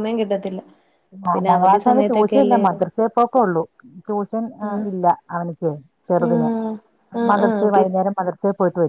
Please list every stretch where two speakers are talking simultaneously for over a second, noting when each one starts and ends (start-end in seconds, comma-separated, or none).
1.3-2.8